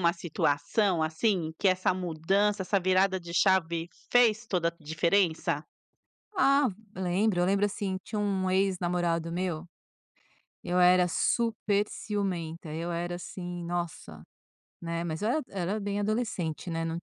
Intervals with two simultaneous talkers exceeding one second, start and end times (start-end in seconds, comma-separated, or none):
none